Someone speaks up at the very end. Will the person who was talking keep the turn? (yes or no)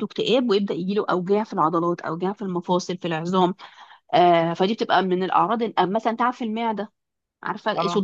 yes